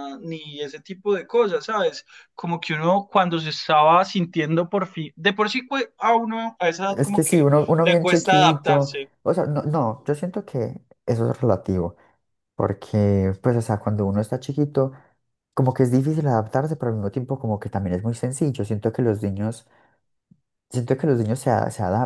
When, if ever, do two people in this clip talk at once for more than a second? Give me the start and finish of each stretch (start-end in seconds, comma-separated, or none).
6.9-9.1